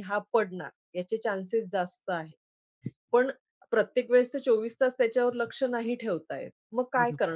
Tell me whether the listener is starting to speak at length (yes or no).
no